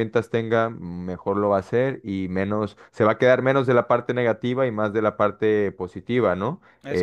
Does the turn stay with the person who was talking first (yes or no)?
yes